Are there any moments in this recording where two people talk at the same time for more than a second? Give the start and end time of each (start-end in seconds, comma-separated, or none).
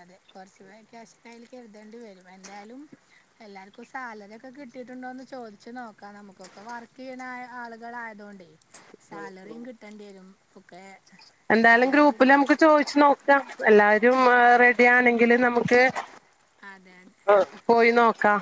none